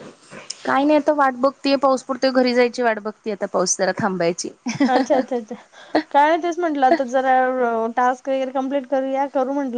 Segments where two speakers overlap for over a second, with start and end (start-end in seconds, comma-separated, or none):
none